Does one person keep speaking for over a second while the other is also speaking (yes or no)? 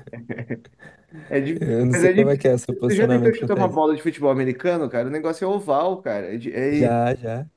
yes